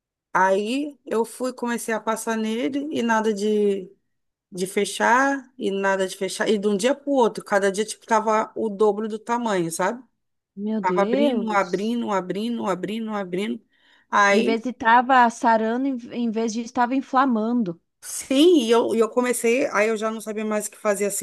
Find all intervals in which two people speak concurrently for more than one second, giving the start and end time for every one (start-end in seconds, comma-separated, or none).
10.8-12.0